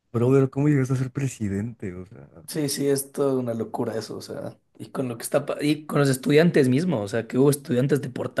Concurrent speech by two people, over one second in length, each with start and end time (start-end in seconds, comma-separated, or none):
none